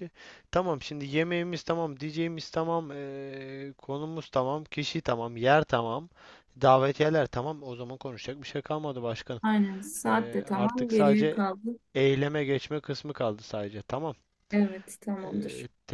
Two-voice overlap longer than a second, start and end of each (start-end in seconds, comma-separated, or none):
10.1-11.4